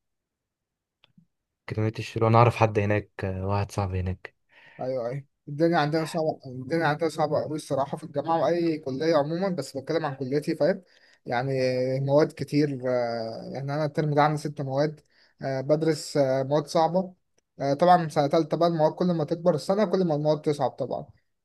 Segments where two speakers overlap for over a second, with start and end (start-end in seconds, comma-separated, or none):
none